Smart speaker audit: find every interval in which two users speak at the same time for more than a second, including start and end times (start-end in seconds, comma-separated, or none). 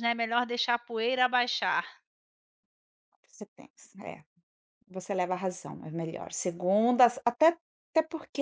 none